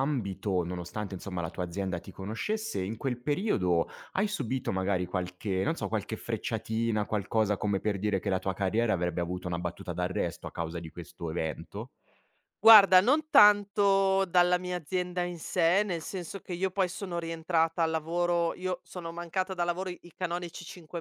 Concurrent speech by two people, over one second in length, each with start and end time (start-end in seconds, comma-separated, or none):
none